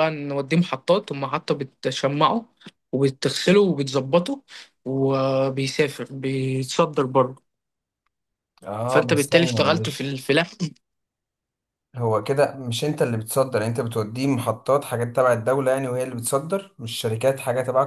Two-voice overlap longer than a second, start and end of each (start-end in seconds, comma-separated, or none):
8.9-10.2